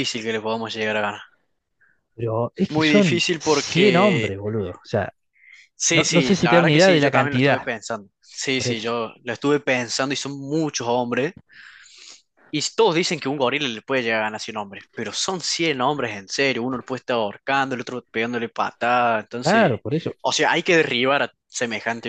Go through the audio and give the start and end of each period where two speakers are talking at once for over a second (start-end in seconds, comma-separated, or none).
2.7-4.3, 5.9-7.7